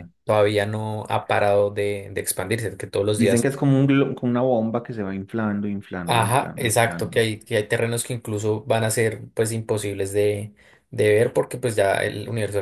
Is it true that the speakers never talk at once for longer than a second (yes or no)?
no